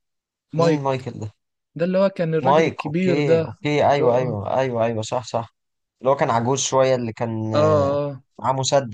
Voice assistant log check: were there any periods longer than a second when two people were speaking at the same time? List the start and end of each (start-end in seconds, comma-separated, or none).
2.4-4.4